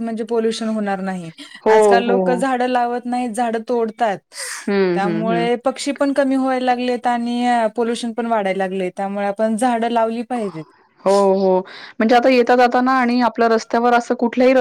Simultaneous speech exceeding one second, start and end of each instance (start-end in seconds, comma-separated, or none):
none